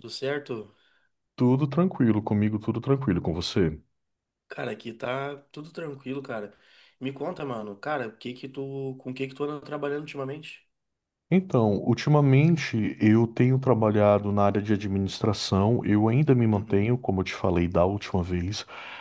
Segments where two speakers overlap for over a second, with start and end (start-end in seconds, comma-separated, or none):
none